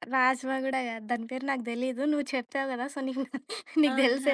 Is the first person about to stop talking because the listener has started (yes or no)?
yes